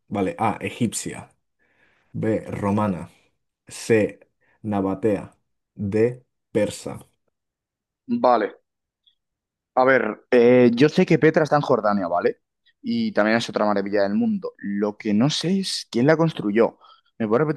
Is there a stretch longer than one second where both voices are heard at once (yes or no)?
no